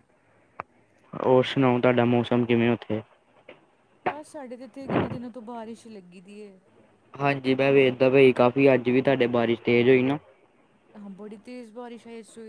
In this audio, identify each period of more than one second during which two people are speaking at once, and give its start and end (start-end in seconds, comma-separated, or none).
none